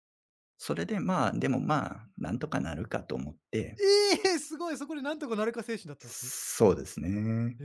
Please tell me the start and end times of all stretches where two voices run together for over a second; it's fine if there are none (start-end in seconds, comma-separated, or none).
none